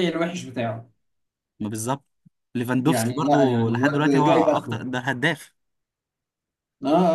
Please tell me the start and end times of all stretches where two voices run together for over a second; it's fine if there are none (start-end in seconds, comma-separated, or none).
2.8-4.8